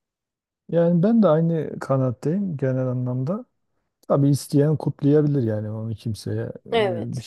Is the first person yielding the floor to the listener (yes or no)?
no